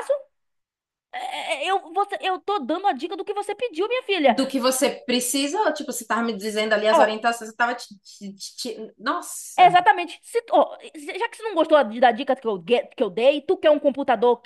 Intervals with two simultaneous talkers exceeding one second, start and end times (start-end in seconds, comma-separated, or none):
none